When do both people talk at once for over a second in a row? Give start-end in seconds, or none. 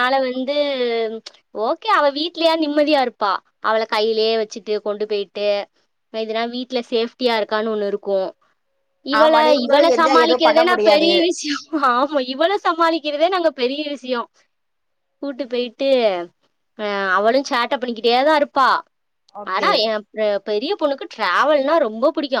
9.2-11.1